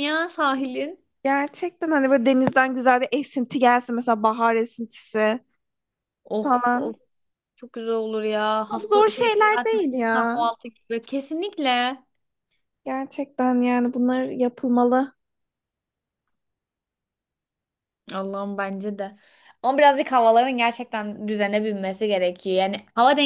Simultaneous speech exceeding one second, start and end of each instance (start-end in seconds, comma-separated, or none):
8.7-10.4